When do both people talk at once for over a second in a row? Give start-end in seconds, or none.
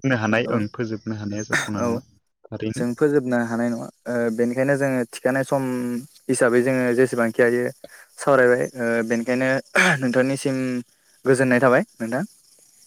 0.5-1.9